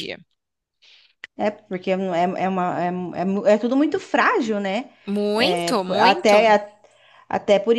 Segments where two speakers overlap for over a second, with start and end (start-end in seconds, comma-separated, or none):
5.3-6.6